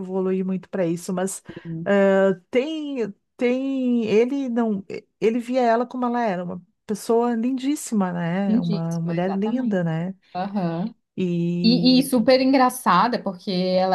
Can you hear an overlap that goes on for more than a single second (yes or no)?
yes